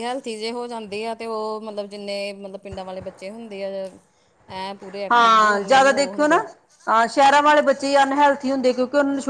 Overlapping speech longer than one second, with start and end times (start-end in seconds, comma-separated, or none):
5.1-6.4